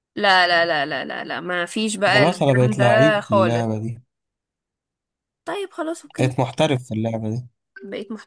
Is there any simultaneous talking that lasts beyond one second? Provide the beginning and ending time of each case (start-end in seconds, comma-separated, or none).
2.0-3.6